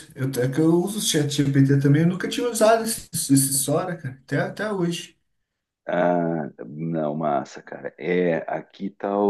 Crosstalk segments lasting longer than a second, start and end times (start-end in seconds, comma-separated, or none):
none